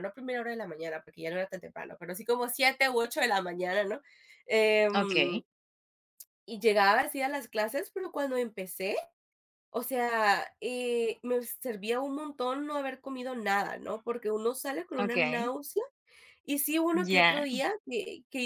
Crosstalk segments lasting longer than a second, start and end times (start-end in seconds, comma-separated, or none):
none